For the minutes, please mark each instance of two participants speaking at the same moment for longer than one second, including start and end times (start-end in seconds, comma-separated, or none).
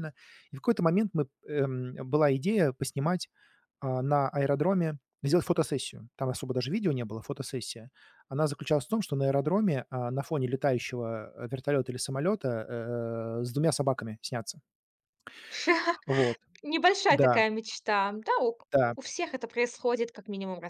none